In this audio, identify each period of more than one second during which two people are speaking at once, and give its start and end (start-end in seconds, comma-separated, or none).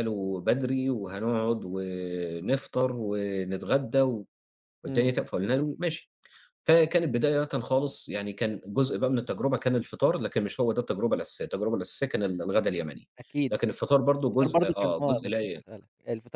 13.5-15.6